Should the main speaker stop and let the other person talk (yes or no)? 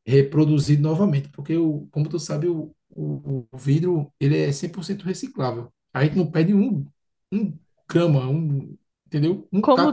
yes